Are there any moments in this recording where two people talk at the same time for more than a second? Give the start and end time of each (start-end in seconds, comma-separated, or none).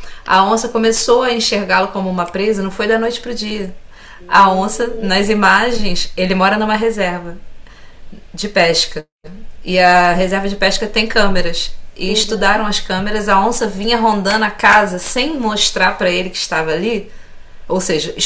4.3-5.5